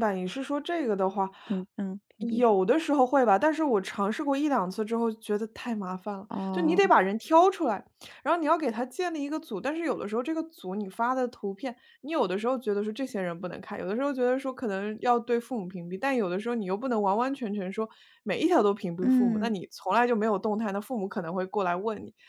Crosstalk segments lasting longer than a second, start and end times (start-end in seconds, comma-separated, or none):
none